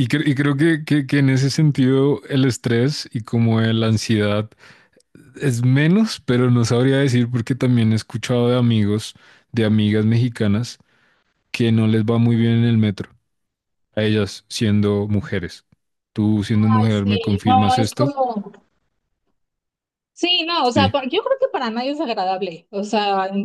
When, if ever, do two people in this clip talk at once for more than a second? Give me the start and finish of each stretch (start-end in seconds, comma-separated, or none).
16.8-18.1